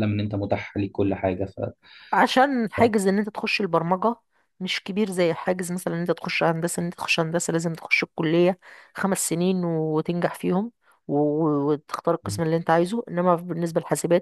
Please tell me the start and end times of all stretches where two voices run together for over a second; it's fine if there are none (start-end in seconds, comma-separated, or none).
none